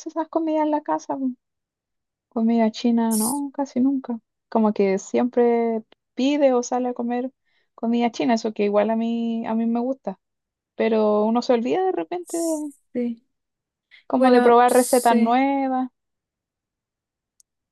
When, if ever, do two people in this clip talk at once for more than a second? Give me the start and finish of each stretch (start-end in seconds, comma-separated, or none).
14.2-15.4